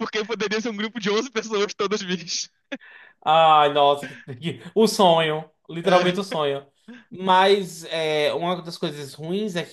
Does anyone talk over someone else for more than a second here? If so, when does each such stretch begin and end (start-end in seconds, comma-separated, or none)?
none